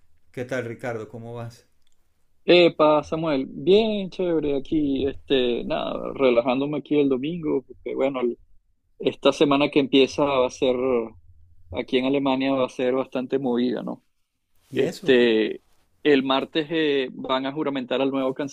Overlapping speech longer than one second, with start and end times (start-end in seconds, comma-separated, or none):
none